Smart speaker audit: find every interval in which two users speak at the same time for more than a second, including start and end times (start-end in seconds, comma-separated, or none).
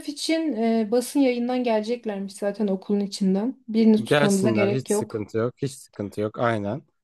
4.0-5.3